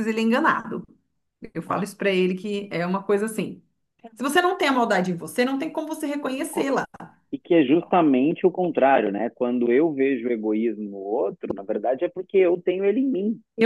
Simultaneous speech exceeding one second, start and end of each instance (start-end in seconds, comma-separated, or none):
none